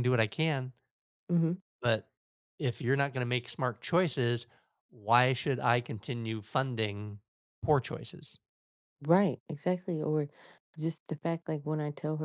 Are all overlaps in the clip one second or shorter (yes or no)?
yes